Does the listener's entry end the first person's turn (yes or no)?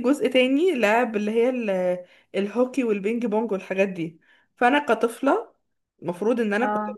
no